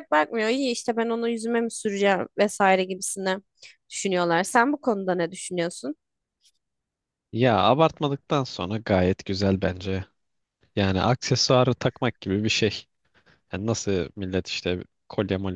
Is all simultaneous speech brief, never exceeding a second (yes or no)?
yes